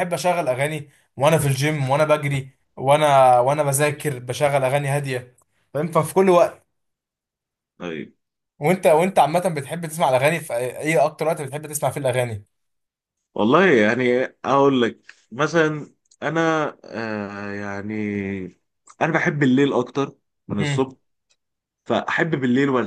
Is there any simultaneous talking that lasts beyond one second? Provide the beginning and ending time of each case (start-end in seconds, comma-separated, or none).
none